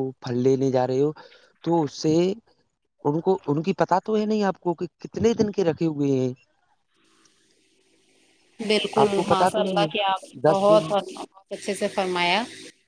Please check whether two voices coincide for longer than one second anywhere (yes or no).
yes